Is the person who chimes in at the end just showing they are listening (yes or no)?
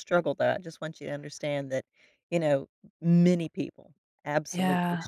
yes